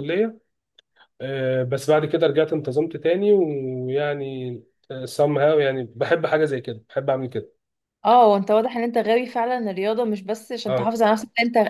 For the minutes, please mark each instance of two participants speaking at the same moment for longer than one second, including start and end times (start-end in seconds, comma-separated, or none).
none